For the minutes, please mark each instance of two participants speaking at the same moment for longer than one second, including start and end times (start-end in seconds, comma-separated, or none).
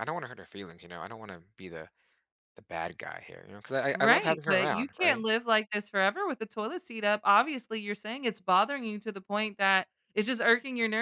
3.9-5.2